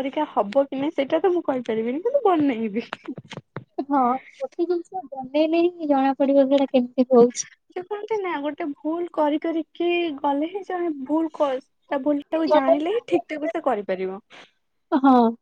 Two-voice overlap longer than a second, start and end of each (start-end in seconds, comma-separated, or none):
none